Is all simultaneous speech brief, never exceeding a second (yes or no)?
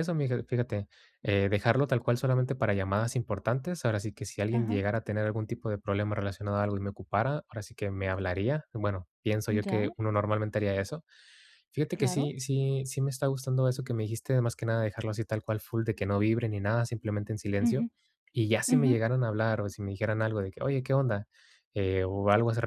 yes